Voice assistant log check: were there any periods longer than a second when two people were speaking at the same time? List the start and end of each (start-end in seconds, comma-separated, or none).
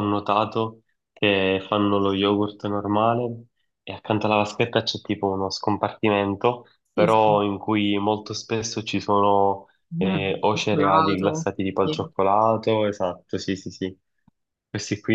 9.9-12.1